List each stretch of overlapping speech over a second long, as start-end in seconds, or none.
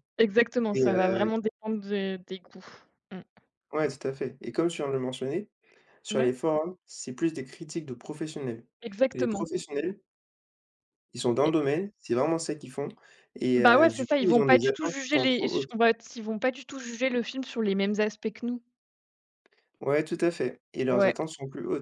13.6-15.7